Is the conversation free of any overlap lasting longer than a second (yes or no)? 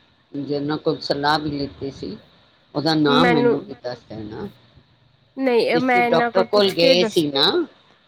no